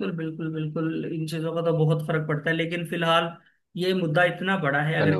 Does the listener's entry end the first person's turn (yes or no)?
no